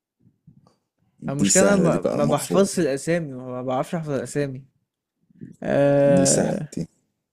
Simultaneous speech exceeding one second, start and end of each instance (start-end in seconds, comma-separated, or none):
1.3-2.7